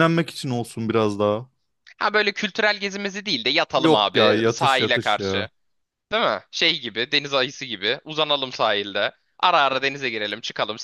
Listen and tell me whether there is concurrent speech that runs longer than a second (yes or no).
yes